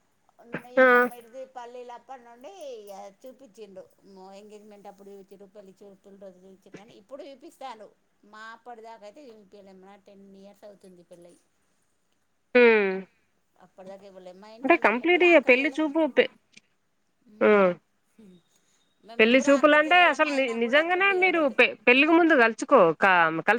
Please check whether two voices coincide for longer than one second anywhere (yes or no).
yes